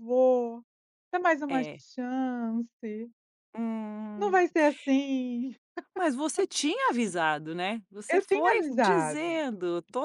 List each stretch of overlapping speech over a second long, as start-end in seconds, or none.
8.1-9.3